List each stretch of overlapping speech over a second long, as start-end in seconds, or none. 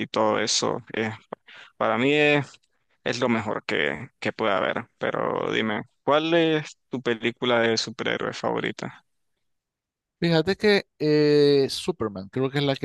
none